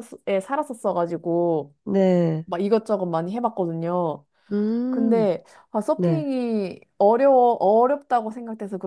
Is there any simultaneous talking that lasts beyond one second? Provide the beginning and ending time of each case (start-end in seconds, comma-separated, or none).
none